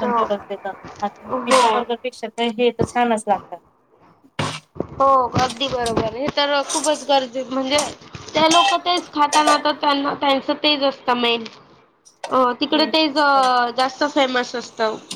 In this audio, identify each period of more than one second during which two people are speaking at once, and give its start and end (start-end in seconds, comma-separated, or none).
none